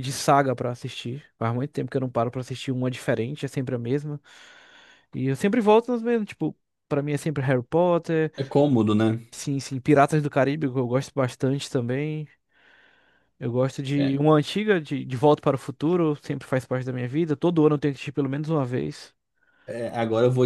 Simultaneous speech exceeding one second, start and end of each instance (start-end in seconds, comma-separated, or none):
none